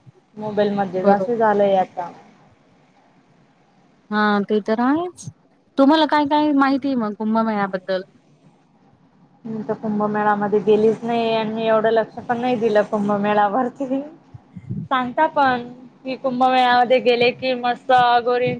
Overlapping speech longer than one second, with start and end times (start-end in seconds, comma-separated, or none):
none